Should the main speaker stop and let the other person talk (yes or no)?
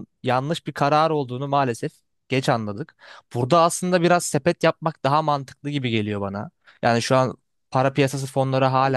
yes